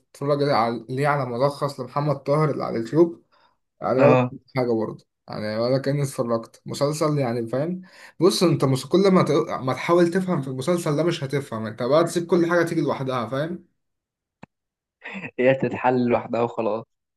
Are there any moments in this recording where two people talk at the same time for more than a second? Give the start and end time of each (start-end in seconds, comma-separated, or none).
none